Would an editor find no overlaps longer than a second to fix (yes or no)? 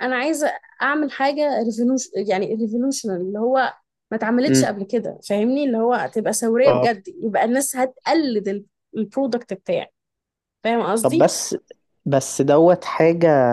yes